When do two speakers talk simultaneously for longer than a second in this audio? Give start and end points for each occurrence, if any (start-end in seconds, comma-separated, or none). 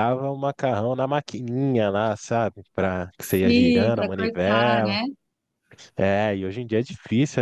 3.2-5.0